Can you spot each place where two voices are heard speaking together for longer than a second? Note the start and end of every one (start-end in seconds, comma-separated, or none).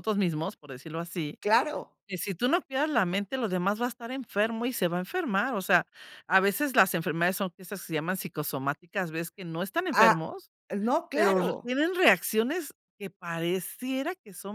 none